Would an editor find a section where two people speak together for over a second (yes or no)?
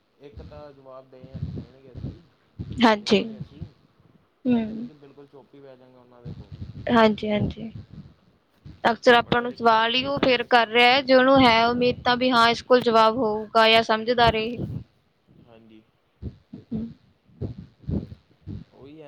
yes